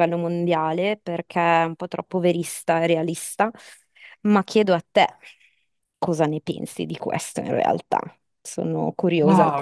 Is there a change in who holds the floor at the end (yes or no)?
yes